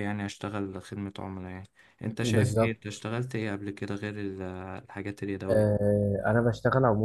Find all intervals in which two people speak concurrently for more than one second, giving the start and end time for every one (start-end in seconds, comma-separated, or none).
none